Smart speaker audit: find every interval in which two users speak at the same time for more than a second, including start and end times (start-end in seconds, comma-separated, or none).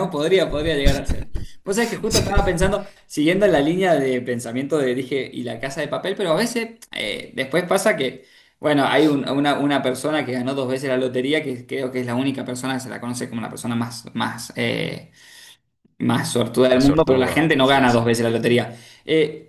16.7-18.0